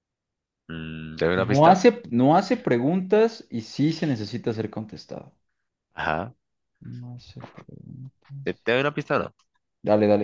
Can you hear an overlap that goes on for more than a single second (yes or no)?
no